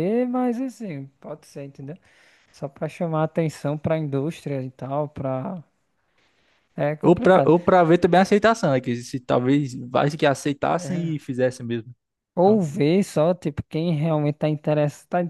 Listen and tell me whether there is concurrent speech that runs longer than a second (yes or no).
no